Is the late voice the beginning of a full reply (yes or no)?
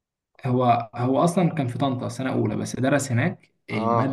no